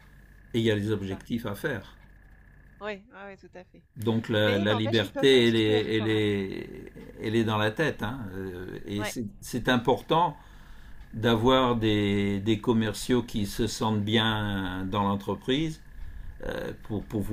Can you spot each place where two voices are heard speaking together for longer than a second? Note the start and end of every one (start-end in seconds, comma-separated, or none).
4.4-6.3